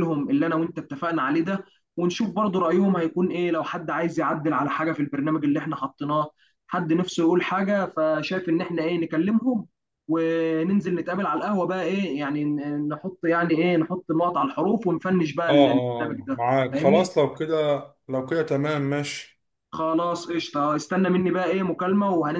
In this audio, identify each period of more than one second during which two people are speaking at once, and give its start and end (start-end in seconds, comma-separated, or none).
15.5-17.1